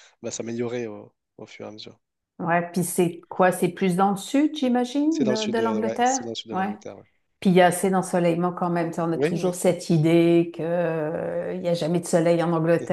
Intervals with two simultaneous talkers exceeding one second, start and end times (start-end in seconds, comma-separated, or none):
5.1-6.7